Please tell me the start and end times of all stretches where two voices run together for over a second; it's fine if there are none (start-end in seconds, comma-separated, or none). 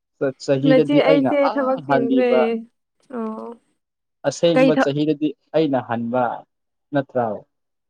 0.7-2.3